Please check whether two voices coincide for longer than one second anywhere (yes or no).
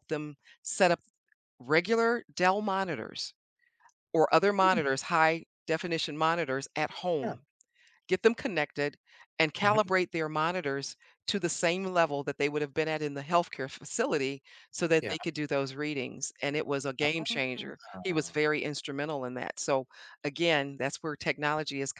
yes